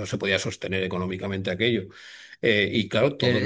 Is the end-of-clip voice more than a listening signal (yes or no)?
yes